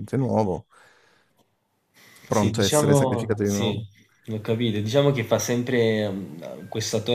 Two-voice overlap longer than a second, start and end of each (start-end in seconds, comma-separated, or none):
2.3-3.8